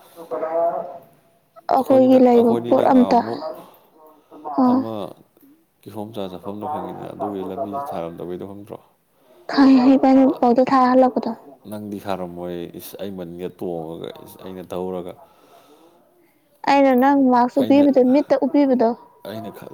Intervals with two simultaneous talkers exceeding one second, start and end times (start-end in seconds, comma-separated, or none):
1.8-3.2